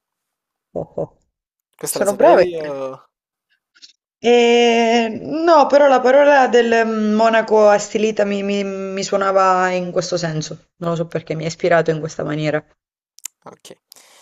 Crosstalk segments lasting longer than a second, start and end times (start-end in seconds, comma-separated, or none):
none